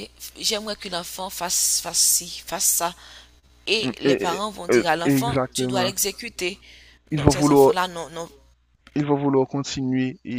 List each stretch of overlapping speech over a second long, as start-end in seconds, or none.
3.8-5.9